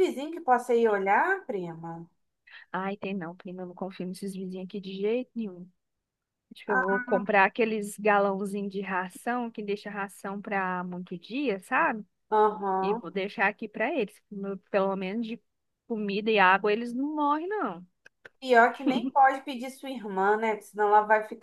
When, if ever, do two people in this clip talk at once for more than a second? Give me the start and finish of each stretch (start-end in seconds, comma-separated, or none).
none